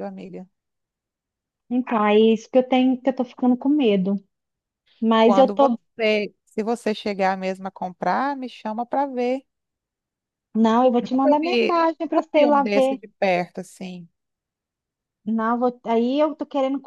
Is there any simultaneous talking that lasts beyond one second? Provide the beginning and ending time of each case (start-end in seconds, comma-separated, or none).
11.0-13.0